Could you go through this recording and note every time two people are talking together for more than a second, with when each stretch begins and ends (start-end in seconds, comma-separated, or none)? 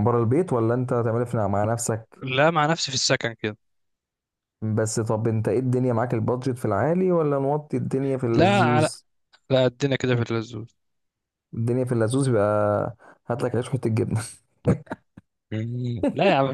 none